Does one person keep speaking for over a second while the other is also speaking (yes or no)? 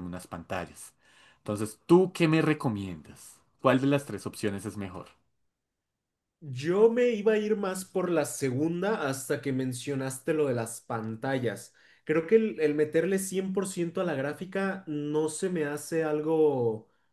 no